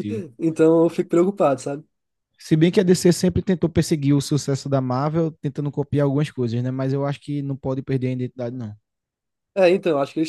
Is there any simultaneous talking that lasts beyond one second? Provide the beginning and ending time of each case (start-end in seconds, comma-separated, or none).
none